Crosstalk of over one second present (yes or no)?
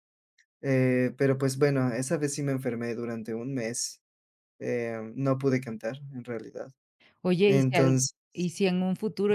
no